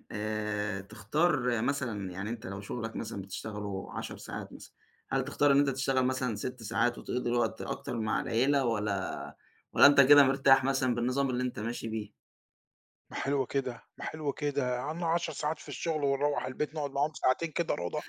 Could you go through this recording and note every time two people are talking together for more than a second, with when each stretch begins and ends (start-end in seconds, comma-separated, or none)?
none